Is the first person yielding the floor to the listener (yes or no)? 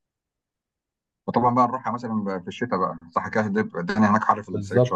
yes